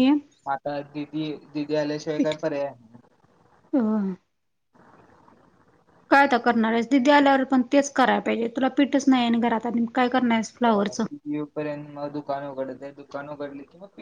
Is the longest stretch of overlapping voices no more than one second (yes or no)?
yes